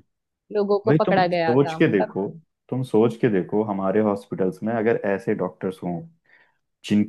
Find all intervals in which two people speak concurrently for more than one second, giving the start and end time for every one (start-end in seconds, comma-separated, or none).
0.9-2.1